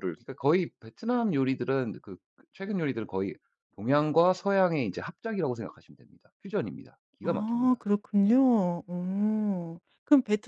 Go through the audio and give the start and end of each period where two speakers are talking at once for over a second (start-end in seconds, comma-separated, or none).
none